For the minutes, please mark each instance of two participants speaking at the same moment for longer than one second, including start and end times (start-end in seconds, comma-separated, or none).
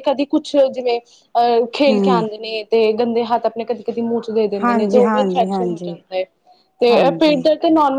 4.6-5.9